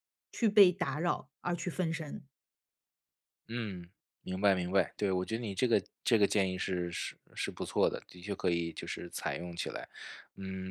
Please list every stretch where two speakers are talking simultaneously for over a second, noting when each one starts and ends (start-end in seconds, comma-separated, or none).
none